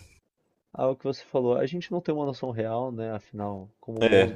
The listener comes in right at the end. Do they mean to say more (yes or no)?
no